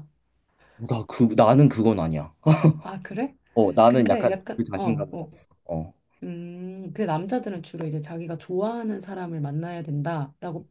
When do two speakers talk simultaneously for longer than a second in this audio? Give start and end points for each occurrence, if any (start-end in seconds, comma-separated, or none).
3.9-5.3